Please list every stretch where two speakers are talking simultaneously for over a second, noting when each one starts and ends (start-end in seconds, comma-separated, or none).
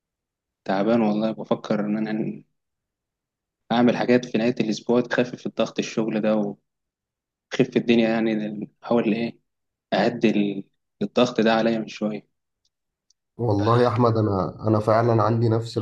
none